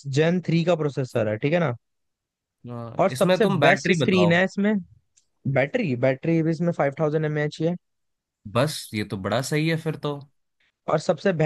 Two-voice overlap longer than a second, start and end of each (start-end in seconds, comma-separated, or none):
3.0-4.4